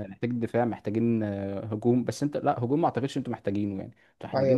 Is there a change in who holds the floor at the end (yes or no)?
yes